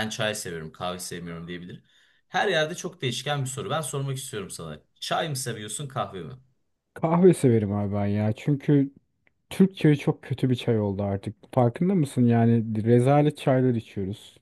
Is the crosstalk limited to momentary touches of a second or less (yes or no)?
yes